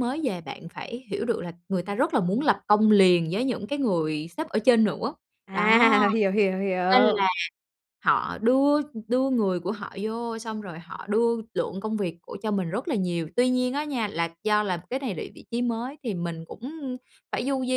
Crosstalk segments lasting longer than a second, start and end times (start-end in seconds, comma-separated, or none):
none